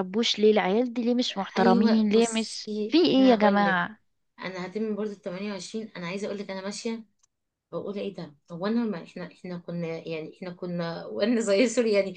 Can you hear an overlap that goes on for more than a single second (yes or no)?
yes